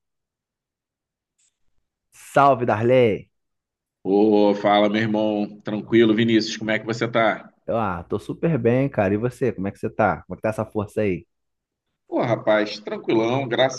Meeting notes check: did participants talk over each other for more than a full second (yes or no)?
no